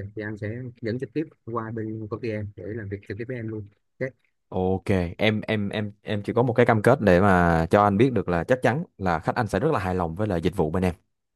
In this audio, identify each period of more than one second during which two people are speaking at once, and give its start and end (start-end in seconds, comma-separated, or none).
none